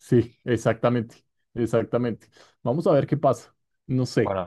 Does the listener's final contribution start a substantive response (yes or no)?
no